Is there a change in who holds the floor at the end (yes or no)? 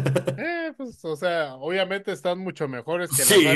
yes